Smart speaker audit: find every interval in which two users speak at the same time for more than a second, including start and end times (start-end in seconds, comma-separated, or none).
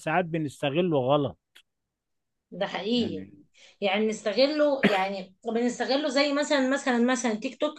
none